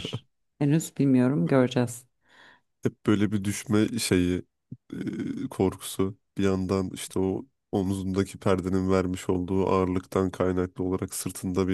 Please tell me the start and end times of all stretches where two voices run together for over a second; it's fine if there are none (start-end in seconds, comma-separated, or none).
none